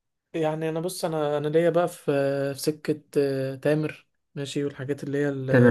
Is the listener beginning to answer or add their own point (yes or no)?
no